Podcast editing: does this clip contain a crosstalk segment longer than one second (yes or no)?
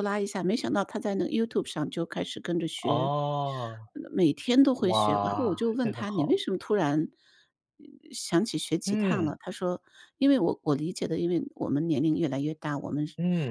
yes